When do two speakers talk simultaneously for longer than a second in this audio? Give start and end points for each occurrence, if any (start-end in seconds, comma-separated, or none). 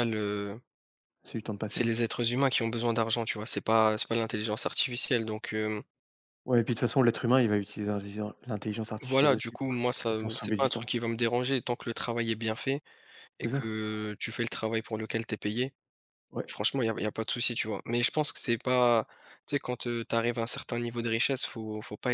9.0-10.9